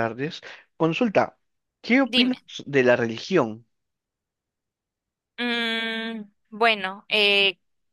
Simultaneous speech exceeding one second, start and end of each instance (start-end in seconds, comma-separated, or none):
none